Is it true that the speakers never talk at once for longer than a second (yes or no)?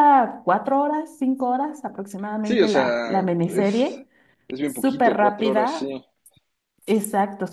no